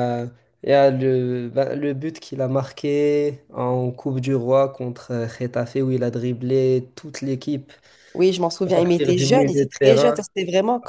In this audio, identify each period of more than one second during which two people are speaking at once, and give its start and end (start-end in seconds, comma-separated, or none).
8.7-10.2